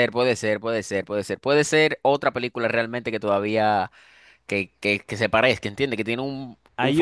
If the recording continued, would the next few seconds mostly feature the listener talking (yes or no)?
yes